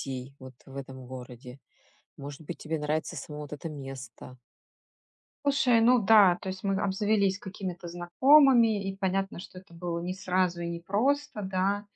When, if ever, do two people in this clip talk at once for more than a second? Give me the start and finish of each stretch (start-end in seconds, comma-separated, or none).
none